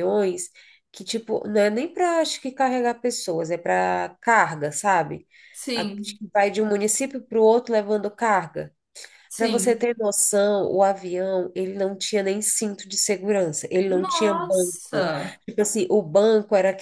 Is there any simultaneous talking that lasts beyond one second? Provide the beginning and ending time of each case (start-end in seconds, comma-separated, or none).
13.9-15.1